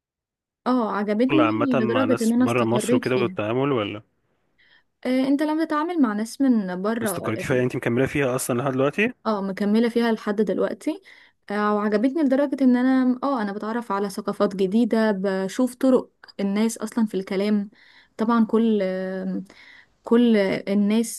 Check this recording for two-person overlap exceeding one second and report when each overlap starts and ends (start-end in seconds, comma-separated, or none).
1.4-3.4